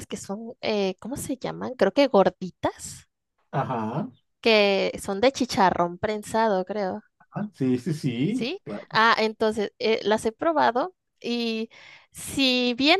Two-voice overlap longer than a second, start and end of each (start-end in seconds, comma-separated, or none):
none